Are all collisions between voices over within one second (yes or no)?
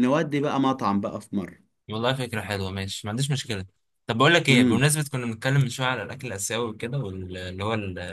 yes